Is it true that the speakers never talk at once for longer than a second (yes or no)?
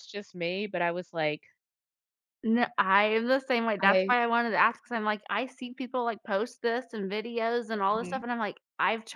yes